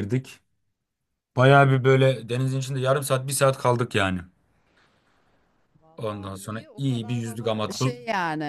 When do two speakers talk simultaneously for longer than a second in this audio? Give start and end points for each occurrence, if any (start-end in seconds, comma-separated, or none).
6.0-8.0